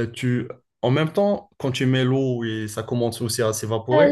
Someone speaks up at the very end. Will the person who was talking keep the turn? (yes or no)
no